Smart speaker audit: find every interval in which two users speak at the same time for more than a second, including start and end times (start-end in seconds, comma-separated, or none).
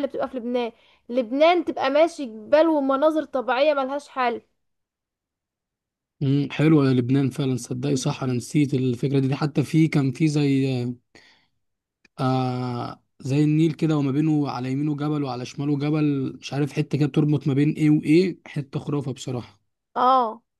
none